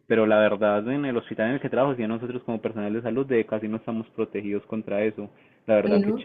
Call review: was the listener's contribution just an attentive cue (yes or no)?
yes